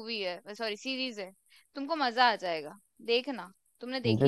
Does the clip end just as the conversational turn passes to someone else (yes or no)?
yes